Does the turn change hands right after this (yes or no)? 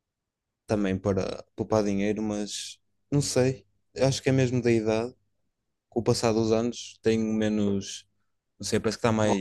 no